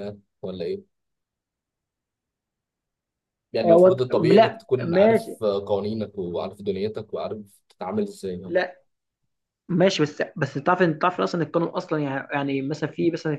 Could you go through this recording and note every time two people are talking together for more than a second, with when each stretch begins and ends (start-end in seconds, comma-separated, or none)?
3.6-5.4